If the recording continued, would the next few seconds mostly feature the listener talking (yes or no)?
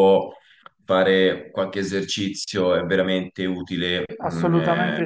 yes